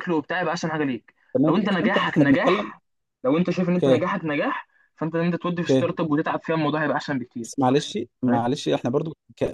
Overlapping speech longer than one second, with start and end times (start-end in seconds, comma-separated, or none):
1.3-2.7